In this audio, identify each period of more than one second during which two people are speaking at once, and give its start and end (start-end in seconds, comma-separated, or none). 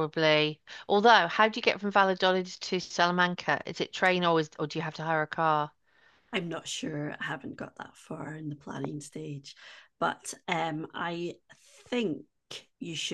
none